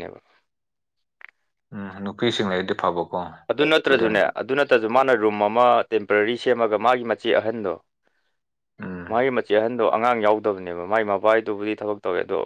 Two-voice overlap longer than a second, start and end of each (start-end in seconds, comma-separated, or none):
none